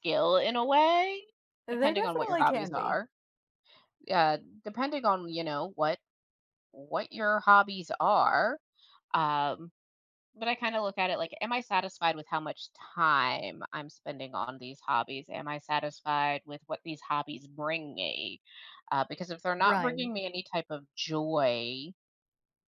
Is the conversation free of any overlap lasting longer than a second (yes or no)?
no